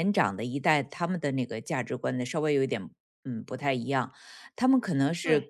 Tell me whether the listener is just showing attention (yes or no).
yes